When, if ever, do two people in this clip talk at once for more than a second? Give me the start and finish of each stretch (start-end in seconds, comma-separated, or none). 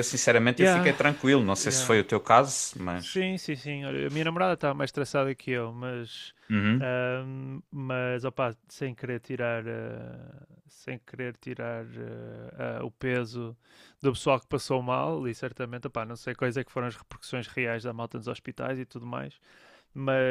none